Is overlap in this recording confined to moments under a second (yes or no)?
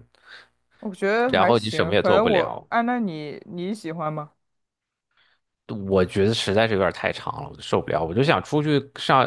no